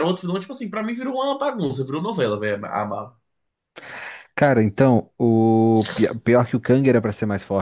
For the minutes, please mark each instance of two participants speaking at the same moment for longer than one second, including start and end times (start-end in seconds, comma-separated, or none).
none